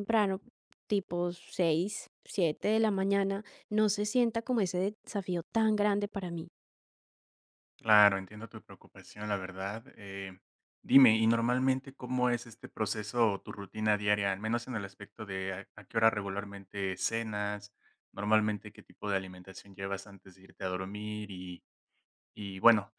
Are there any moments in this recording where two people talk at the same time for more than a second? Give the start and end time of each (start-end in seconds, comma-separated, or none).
none